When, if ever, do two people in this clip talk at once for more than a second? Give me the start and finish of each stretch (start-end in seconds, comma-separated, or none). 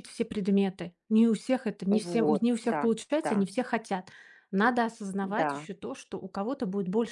1.9-3.5